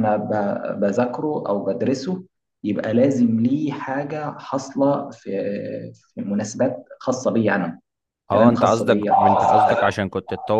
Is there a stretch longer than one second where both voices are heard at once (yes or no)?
yes